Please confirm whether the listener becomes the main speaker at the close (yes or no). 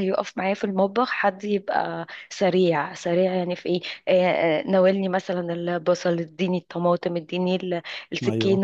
no